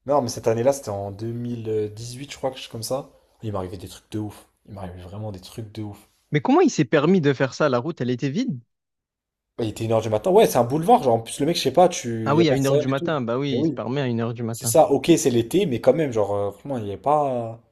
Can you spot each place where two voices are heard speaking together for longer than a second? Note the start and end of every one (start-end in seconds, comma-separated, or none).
12.2-13.8